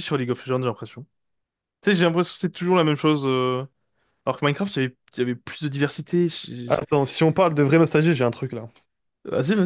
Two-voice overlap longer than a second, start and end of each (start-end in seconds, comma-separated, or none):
none